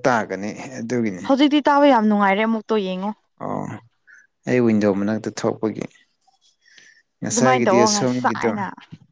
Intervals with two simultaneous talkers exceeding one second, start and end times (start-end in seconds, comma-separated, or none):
7.3-8.5